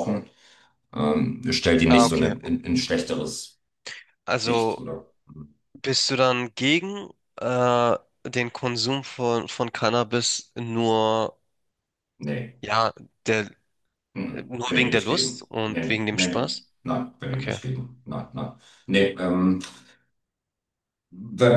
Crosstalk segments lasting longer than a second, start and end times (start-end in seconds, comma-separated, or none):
14.3-16.7